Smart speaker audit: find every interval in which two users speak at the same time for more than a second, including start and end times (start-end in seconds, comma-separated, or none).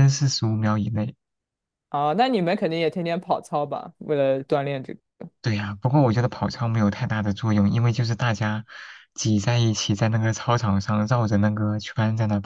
none